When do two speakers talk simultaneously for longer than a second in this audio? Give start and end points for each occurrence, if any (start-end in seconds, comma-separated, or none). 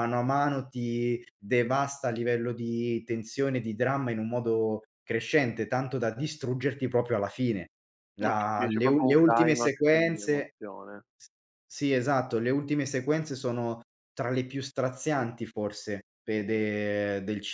8.2-10.5